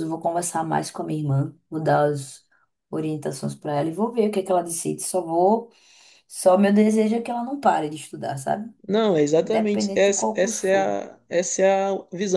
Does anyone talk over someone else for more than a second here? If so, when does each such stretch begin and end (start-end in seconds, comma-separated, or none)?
9.4-10.9